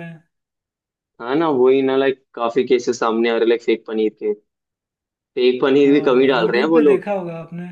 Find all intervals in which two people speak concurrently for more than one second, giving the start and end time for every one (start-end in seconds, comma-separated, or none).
5.8-7.1